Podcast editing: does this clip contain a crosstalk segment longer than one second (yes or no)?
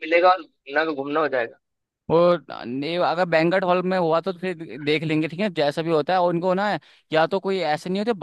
no